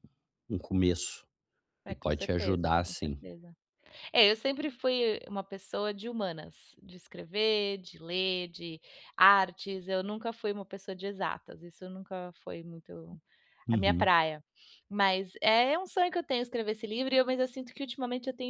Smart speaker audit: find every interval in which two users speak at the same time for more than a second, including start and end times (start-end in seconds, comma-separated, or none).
1.9-3.2